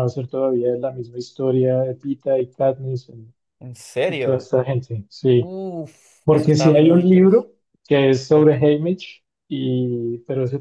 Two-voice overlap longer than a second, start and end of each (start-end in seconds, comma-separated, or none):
6.2-7.5